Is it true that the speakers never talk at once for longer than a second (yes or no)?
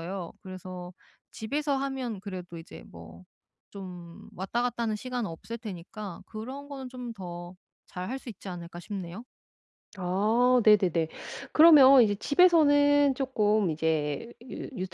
yes